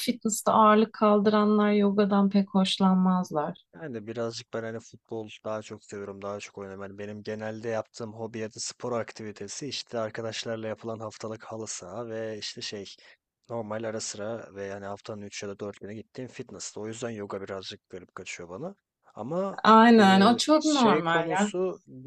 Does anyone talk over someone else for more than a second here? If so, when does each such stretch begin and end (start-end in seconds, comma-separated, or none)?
19.6-21.5